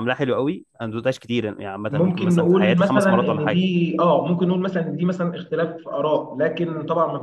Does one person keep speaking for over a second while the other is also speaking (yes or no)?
yes